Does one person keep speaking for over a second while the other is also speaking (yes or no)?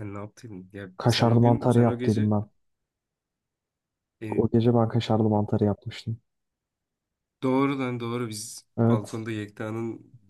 yes